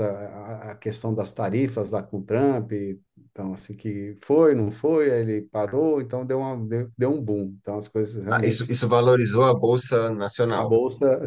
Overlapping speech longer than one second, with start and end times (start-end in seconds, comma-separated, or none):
none